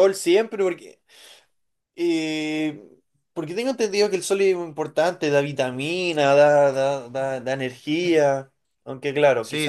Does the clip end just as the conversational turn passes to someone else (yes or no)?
no